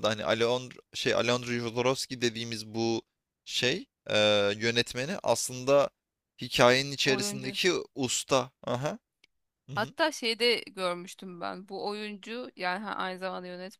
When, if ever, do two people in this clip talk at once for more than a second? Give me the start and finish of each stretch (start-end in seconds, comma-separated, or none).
none